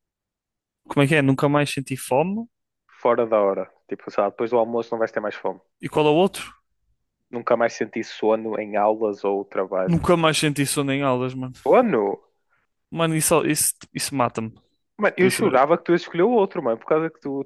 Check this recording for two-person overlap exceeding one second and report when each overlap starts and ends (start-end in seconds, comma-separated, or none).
none